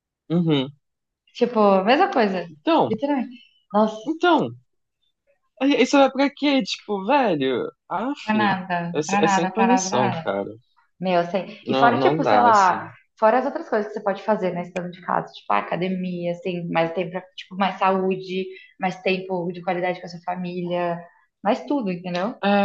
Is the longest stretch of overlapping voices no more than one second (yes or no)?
no